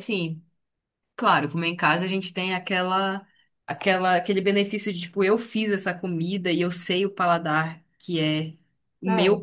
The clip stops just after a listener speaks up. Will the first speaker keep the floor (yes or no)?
yes